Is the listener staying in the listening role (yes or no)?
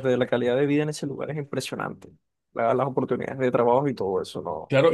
no